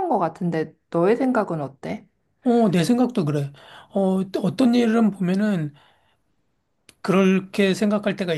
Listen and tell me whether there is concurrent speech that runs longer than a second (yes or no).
no